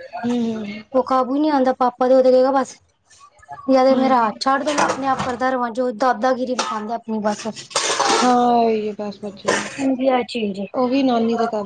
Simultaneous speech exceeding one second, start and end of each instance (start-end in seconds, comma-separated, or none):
none